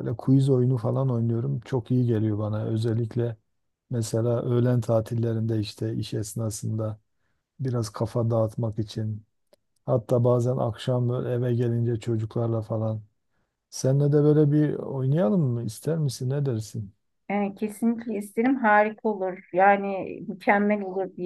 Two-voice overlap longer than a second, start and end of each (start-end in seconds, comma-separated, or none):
none